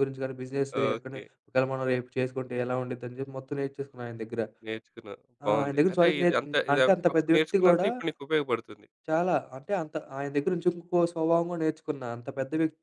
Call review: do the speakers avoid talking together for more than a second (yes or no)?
no